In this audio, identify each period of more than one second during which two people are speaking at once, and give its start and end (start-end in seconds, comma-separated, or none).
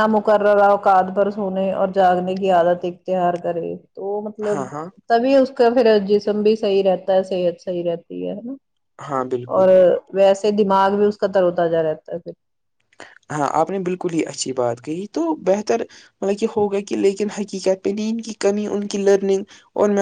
none